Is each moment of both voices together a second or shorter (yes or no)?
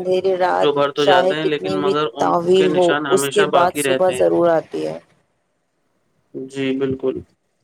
no